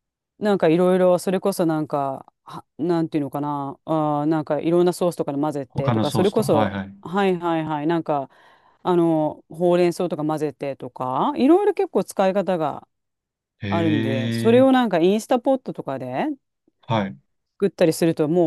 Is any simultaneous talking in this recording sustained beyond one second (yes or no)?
yes